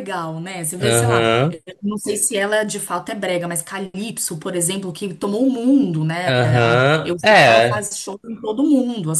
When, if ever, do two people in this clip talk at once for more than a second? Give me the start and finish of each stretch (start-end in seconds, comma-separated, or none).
6.3-7.9